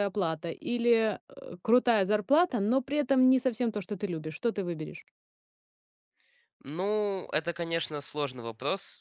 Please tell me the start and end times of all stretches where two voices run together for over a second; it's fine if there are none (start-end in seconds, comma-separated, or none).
none